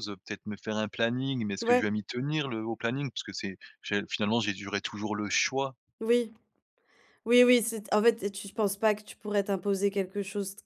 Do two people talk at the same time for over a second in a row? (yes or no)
no